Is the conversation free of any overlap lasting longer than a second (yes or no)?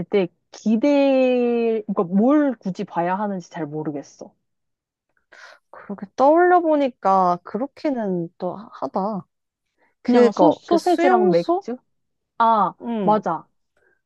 no